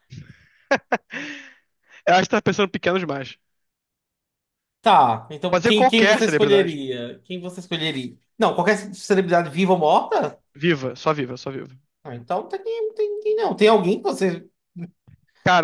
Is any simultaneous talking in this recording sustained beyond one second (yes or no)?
yes